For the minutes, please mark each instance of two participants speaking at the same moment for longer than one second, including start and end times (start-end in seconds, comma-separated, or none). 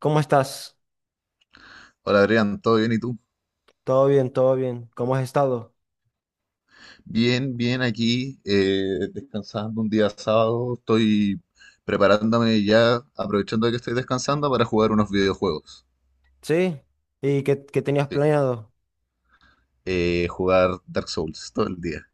none